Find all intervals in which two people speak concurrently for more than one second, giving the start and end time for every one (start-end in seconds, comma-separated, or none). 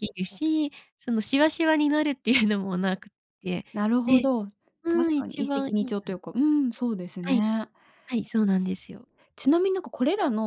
4.9-6.2